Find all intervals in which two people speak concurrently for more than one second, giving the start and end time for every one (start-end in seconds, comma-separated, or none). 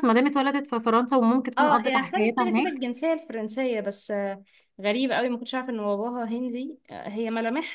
1.6-2.8